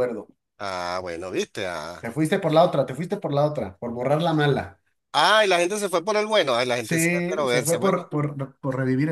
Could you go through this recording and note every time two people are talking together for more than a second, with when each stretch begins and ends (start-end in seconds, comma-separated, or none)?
6.7-8.1